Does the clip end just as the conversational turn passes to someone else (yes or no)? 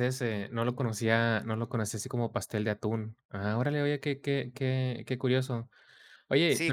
yes